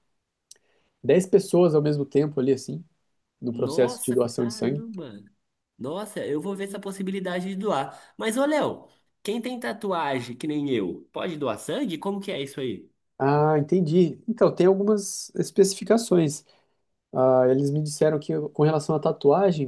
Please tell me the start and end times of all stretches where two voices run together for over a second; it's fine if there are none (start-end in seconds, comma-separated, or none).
3.5-4.8